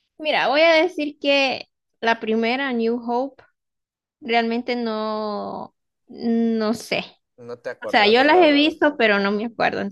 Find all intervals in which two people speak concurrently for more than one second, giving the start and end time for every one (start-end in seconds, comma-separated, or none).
7.8-9.3